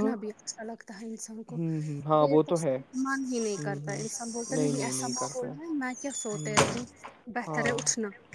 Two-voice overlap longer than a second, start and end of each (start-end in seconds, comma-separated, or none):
none